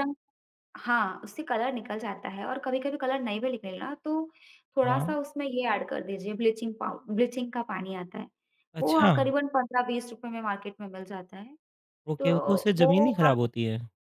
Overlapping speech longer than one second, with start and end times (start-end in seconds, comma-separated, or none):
12.2-13.5